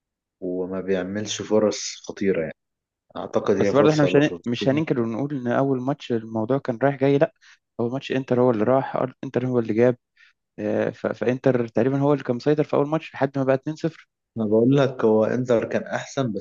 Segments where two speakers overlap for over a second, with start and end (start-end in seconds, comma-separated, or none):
3.6-4.8